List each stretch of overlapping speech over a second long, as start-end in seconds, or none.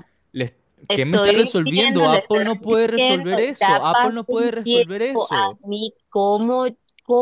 0.9-5.6